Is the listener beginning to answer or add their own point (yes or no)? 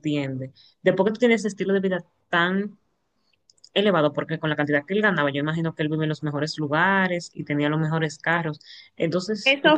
yes